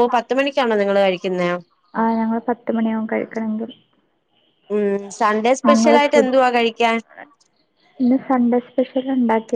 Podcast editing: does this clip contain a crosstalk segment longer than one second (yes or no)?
no